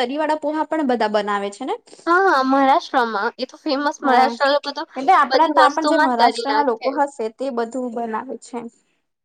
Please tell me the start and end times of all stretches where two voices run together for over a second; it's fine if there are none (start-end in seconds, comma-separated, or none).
5.3-6.9